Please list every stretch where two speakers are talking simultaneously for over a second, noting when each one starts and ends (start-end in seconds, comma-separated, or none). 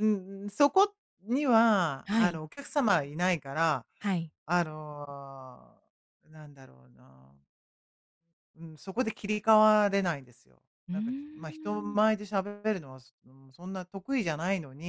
10.9-12.2